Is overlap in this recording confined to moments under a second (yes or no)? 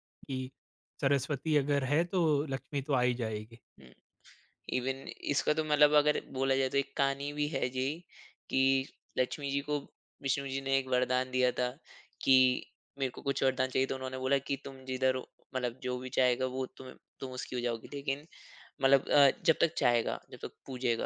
yes